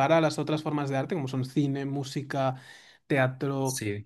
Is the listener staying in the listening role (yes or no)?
yes